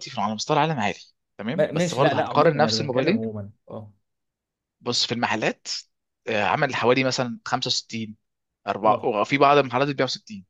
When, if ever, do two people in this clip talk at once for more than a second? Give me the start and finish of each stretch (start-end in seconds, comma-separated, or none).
1.6-3.3